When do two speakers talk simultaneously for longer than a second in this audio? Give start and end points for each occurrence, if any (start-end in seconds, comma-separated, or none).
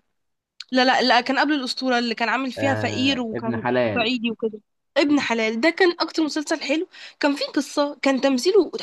2.6-4.1